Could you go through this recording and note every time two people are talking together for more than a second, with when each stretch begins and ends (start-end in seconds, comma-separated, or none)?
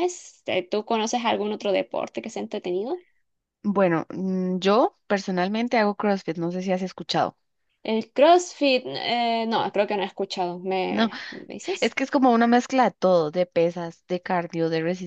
none